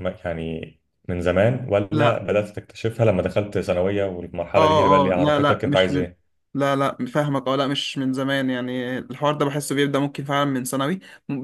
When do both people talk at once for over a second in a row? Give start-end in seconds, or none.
4.6-6.0